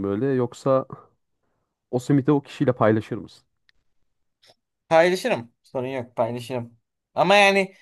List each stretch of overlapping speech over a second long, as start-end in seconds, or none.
none